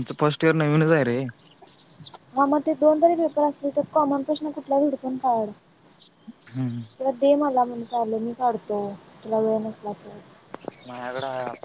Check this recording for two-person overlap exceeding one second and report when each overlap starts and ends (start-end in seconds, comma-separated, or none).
none